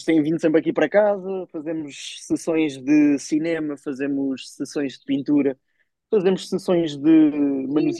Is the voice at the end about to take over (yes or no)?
no